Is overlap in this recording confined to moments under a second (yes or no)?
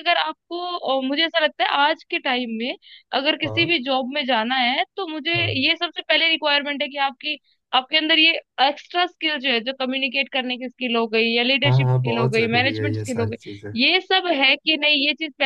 no